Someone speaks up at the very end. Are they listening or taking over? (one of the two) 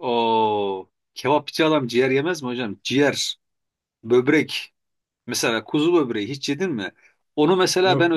listening